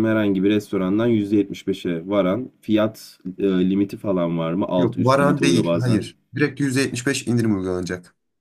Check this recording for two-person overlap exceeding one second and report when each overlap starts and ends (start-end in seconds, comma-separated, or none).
4.8-6.1